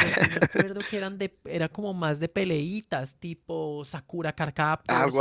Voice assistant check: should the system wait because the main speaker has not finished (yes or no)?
no